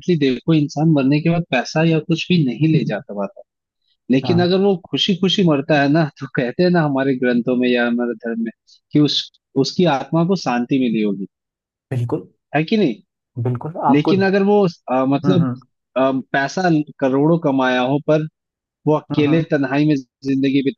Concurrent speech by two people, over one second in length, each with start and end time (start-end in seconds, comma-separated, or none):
none